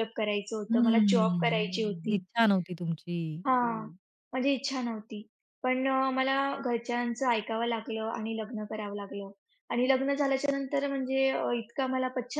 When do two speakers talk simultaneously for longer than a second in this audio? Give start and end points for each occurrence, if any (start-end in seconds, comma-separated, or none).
0.7-2.2